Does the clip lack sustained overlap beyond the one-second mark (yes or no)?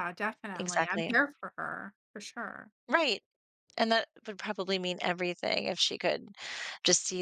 yes